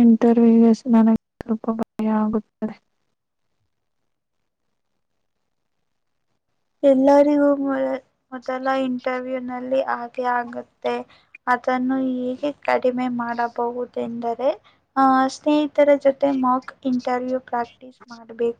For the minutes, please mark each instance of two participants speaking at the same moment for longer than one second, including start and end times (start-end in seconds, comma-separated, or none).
none